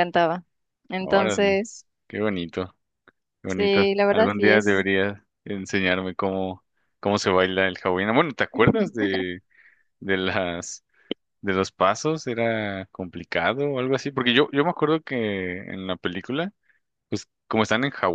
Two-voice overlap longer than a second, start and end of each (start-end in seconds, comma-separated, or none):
3.5-4.9